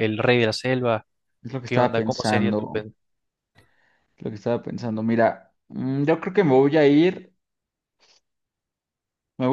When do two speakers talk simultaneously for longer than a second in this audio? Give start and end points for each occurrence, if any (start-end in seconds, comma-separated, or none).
1.6-2.9